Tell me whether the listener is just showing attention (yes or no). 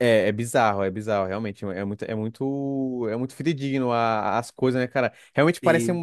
yes